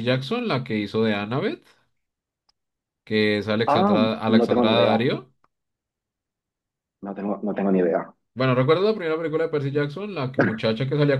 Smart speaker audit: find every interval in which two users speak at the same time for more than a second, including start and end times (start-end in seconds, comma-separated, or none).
3.6-5.0